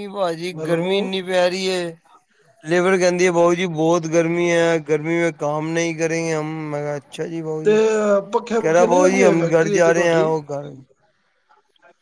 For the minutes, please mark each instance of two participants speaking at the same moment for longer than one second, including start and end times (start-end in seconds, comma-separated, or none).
8.6-10.2